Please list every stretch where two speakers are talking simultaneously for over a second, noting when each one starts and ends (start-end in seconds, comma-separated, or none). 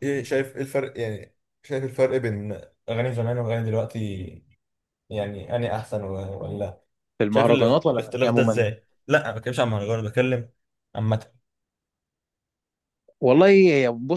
7.3-8.7